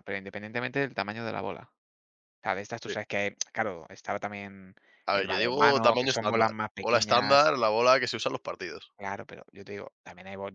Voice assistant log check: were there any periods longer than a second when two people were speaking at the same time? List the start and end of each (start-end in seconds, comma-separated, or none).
5.1-7.5